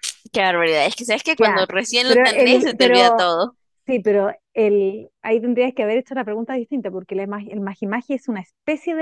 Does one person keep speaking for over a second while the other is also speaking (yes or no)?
yes